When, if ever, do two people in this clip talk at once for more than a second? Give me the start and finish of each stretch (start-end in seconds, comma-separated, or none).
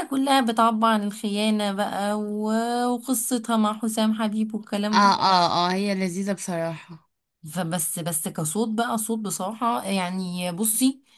none